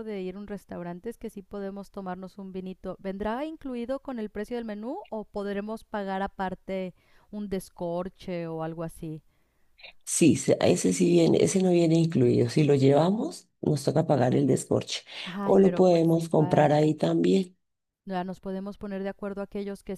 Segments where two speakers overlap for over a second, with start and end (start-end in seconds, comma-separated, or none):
15.4-16.8